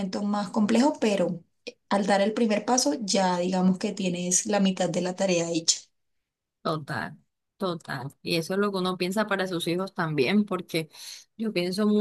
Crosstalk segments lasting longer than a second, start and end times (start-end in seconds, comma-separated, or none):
none